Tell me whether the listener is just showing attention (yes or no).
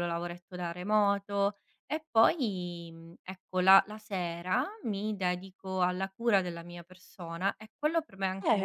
no